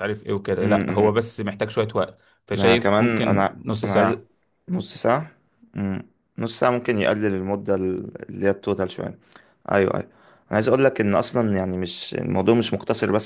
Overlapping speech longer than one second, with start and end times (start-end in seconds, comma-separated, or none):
2.5-4.2